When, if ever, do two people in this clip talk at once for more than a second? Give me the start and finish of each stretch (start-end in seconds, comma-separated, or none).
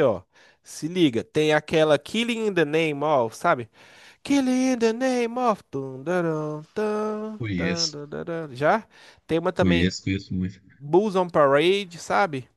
none